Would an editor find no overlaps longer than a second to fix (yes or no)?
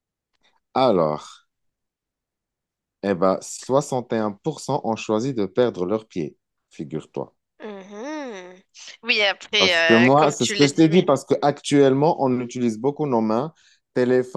no